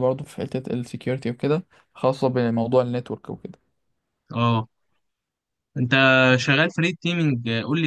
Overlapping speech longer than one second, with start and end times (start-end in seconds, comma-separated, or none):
none